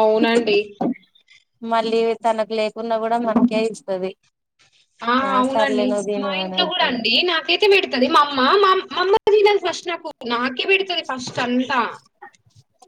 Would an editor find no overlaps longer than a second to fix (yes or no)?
yes